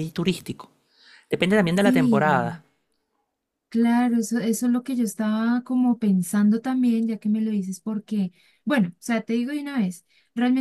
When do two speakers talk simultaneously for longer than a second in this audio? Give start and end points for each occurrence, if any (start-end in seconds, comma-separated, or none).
none